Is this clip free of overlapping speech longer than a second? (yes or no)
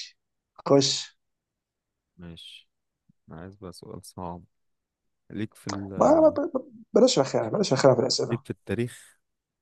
yes